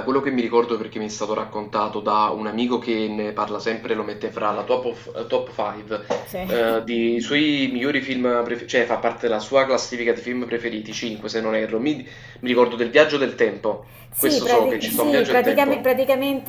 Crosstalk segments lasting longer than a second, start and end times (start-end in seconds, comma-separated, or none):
14.1-15.9